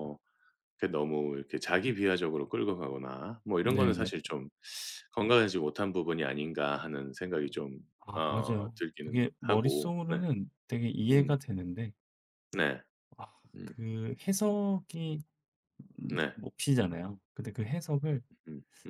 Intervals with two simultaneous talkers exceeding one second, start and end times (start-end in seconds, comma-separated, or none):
8.2-10.2